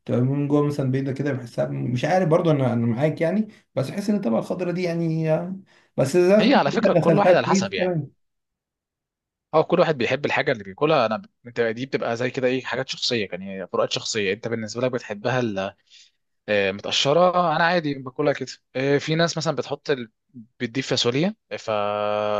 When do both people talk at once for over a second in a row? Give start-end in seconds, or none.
6.4-8.0